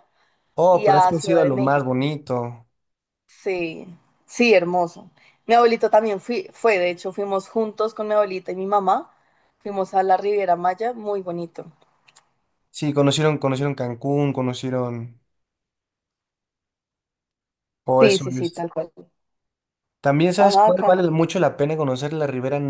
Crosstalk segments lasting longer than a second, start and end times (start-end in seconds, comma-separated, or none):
0.7-2.0